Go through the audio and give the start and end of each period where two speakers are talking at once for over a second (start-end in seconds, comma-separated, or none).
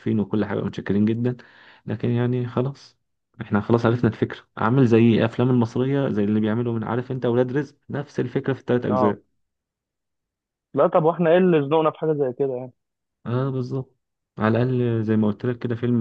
none